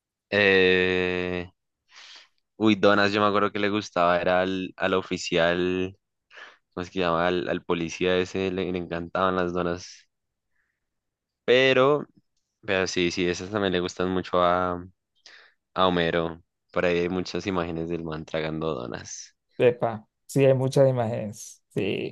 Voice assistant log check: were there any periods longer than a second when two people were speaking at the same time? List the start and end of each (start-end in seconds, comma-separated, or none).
none